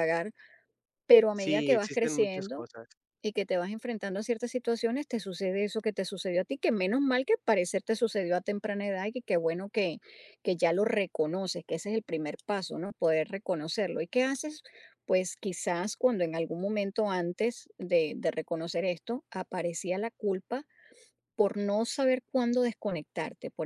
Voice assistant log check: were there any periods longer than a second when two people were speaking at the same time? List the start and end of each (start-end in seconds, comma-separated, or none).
1.3-2.6